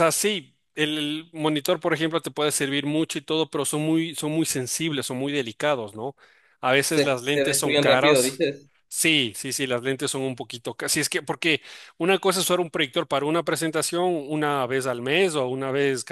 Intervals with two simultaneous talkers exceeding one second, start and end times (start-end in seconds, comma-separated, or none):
6.9-8.4